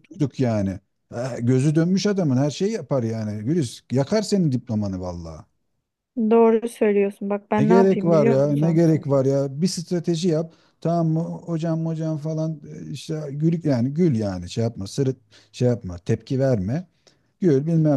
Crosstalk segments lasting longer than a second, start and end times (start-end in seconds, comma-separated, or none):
7.6-8.8